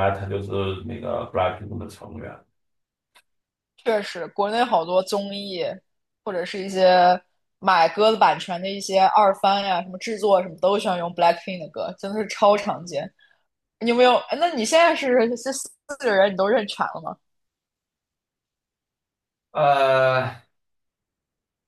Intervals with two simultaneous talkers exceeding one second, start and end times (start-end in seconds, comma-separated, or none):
none